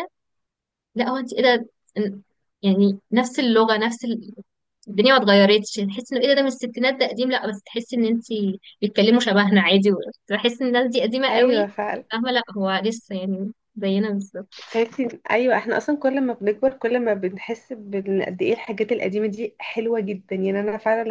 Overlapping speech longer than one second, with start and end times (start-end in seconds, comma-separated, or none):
none